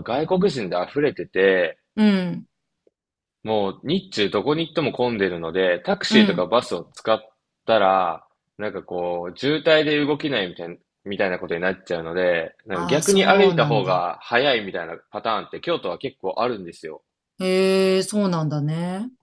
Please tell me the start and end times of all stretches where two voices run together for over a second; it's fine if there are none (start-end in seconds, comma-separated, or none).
12.7-14.1